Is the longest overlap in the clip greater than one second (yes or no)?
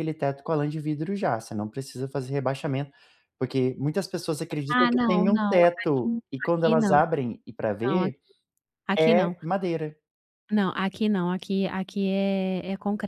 yes